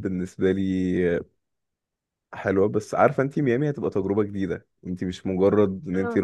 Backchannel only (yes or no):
yes